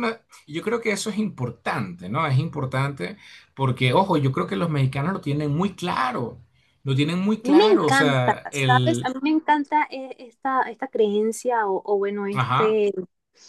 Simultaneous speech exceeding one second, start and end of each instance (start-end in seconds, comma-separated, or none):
7.4-9.1